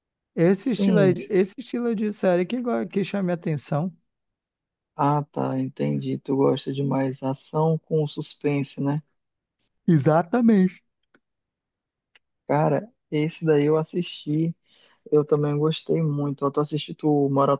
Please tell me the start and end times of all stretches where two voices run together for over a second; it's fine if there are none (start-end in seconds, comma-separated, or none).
none